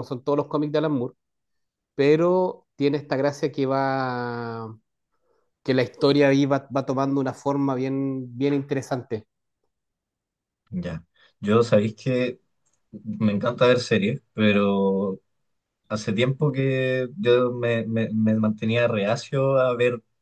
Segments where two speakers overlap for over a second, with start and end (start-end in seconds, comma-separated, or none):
none